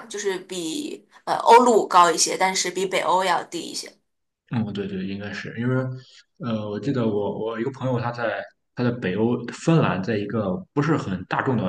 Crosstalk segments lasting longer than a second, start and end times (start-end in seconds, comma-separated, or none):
none